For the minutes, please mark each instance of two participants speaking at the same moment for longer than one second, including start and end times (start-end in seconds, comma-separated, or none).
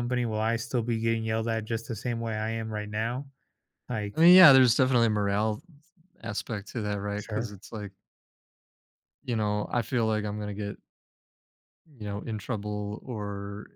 none